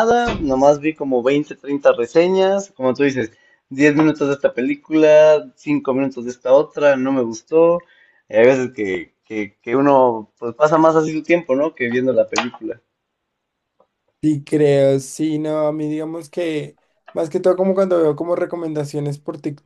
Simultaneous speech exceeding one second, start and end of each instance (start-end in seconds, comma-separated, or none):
none